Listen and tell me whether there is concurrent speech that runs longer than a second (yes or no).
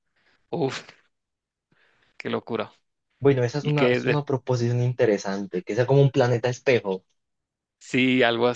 no